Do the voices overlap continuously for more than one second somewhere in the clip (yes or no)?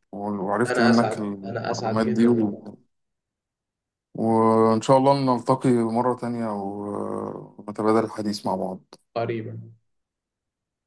yes